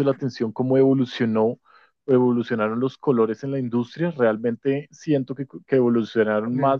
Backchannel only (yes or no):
yes